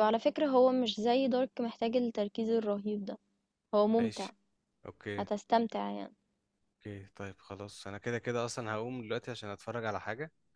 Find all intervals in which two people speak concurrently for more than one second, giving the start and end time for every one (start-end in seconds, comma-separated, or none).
none